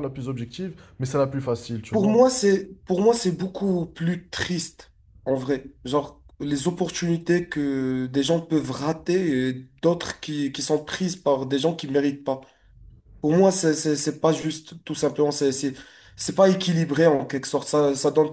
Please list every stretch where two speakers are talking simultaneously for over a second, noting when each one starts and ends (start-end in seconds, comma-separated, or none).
none